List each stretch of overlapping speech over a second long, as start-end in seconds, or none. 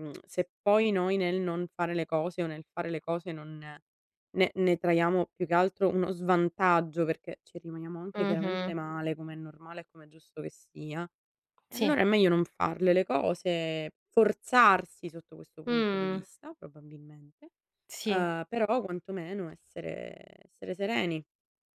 none